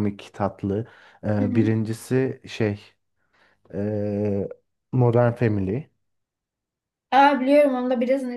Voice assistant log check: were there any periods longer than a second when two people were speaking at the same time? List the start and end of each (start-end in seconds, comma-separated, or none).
none